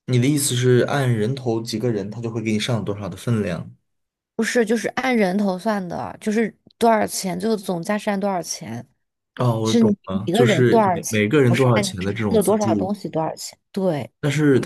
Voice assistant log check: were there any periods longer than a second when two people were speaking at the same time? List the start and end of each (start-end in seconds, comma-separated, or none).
9.6-12.9